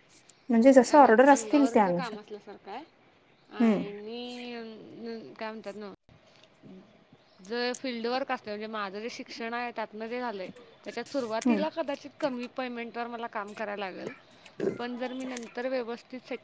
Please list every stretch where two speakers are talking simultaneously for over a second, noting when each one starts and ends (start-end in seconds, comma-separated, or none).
0.8-2.2